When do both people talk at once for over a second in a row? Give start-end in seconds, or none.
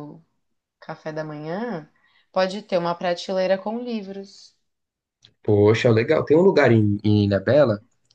none